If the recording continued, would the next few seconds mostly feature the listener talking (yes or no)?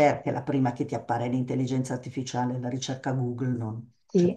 yes